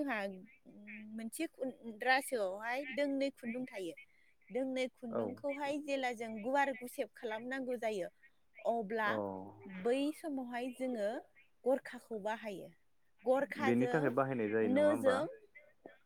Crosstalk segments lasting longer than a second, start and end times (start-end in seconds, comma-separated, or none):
13.7-15.1